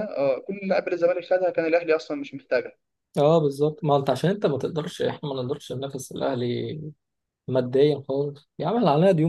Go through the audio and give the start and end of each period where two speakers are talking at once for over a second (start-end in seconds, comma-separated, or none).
none